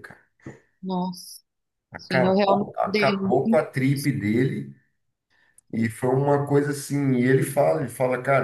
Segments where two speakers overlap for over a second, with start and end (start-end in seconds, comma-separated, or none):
2.0-3.6